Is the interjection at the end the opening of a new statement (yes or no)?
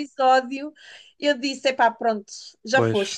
yes